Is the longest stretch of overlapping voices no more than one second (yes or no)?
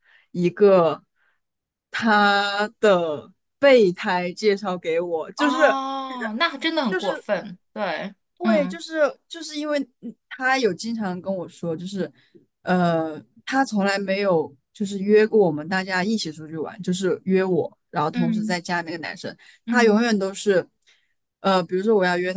yes